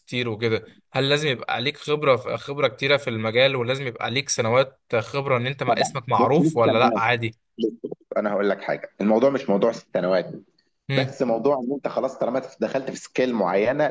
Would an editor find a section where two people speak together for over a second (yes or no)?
yes